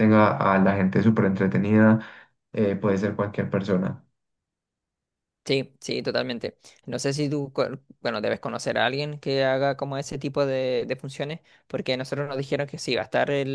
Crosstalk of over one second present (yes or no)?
no